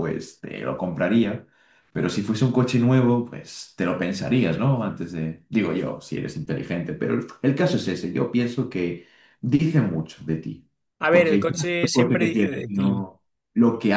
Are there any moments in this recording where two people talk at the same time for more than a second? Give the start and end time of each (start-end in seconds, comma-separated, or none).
11.1-13.0